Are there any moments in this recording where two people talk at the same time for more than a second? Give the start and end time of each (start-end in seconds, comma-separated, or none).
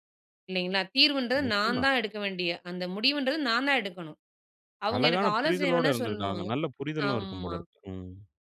5.0-6.5